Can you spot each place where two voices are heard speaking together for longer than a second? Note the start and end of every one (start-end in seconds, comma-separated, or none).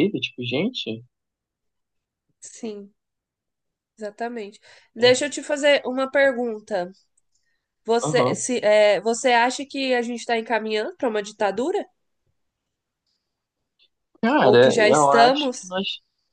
14.4-15.7